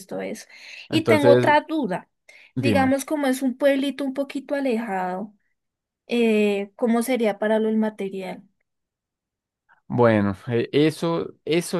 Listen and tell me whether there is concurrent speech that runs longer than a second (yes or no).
no